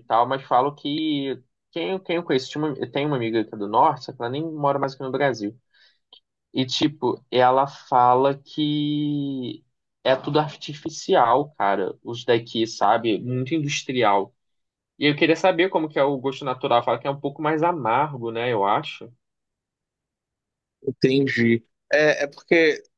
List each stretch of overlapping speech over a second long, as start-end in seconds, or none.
none